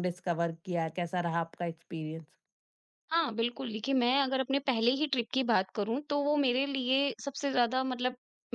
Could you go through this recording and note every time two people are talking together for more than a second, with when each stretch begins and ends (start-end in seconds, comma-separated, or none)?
none